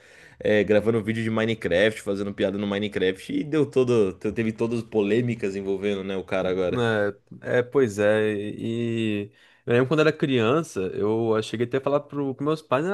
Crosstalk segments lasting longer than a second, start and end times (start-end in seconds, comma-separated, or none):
none